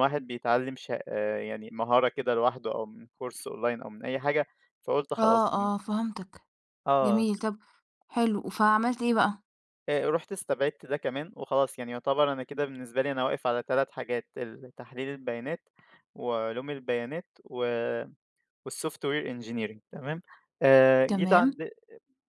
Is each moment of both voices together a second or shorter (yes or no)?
yes